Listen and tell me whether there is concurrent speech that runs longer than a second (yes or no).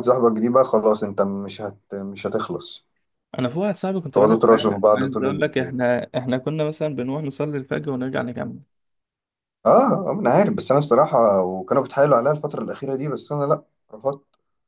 yes